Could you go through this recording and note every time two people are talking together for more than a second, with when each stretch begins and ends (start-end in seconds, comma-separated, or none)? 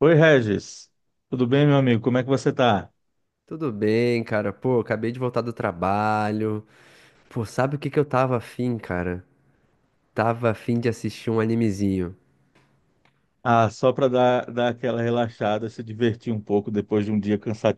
none